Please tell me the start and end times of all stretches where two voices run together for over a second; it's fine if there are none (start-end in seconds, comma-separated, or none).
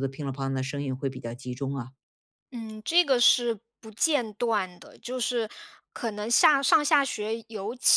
none